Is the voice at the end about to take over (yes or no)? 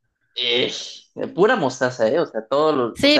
yes